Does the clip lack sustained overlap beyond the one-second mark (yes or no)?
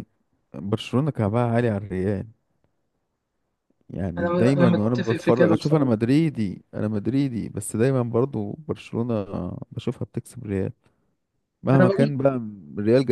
no